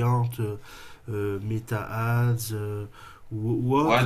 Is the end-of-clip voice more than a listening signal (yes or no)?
yes